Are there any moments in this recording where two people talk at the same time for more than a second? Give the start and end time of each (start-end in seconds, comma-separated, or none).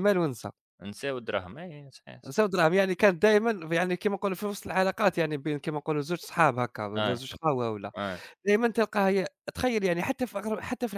none